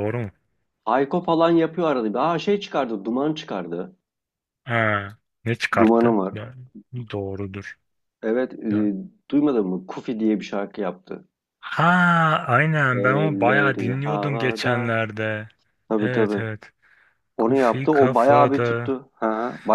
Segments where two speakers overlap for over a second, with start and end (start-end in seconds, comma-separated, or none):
12.9-14.9, 17.4-18.9